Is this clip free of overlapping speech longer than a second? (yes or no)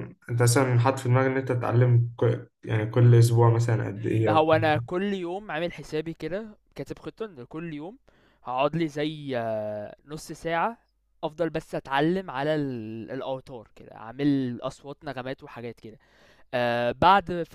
yes